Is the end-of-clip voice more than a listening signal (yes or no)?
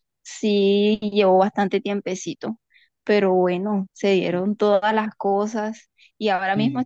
no